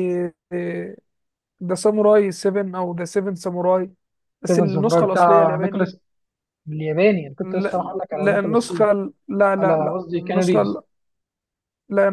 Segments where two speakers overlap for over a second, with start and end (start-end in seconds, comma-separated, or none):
4.5-5.9, 7.4-8.8, 9.6-10.8